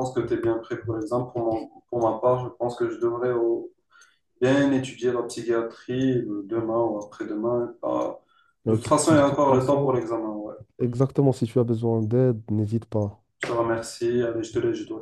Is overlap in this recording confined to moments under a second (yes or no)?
no